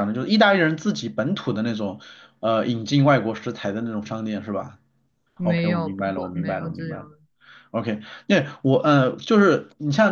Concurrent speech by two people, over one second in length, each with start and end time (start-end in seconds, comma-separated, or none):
5.4-7.1